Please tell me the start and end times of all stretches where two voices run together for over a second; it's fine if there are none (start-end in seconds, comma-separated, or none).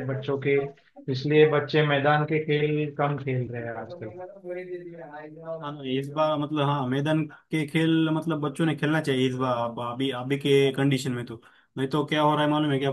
none